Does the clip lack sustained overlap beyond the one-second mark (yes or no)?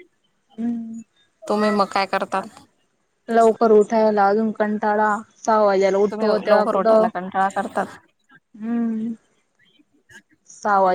yes